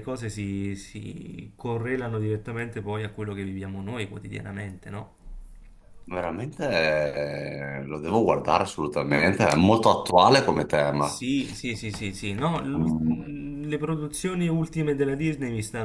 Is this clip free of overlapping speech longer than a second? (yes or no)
yes